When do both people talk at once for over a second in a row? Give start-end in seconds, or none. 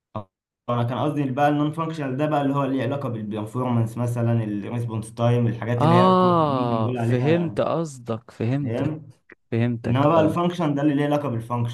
5.8-7.6